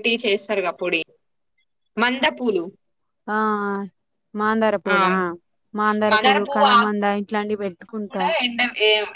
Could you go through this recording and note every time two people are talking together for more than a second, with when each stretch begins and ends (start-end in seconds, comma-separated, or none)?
none